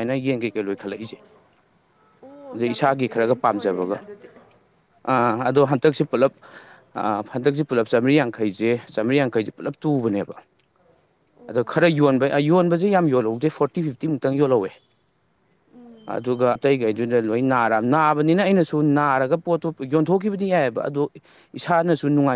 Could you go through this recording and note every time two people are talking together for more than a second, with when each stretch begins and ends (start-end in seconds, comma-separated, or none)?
2.5-4.0